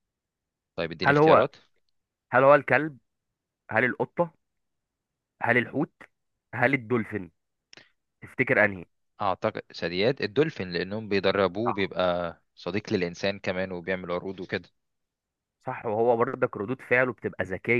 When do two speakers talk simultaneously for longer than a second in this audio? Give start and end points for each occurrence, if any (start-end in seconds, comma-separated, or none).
none